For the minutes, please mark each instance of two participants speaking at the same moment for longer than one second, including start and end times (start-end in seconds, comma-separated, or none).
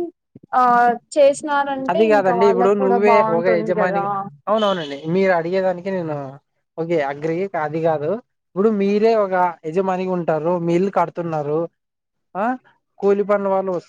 1.9-4.0